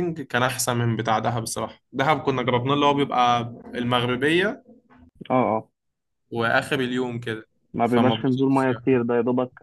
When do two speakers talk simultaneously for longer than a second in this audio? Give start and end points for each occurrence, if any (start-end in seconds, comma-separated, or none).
7.8-9.1